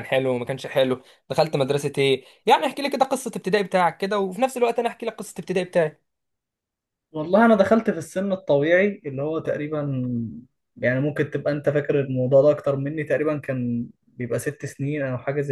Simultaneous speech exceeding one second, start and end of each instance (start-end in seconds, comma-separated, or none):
none